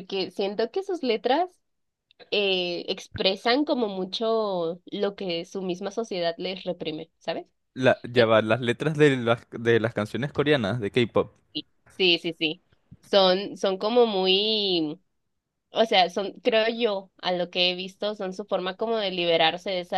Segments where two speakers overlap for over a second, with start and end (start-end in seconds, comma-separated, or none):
none